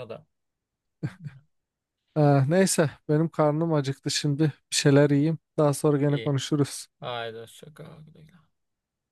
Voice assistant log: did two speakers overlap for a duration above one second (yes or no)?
no